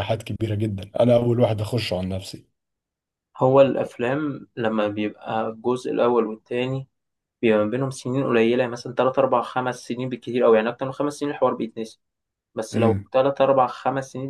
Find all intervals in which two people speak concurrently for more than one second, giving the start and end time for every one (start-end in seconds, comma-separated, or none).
none